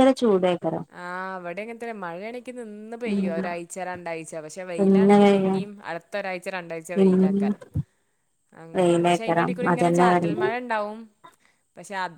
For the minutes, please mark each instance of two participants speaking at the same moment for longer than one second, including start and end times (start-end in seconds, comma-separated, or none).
8.8-10.4